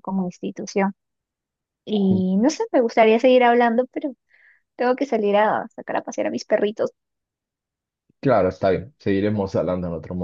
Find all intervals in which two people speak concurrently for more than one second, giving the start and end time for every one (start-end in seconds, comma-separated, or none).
none